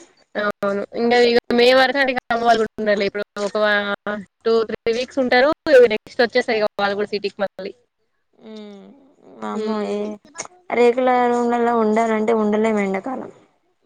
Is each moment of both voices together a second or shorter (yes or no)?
yes